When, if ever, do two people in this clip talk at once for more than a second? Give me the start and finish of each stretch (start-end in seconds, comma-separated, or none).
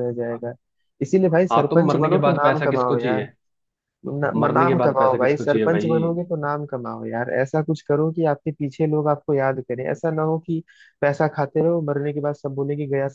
1.5-3.2, 4.3-5.9